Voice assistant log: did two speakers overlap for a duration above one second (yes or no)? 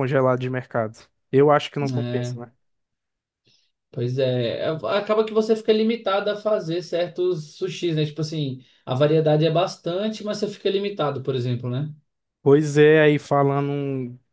no